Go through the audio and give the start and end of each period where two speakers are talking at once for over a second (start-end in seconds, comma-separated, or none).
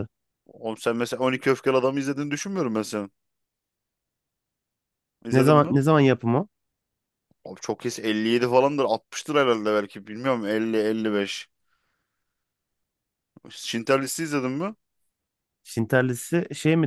none